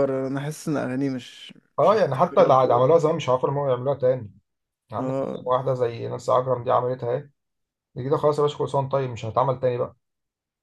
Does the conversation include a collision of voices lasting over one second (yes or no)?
yes